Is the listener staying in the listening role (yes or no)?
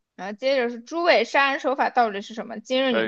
no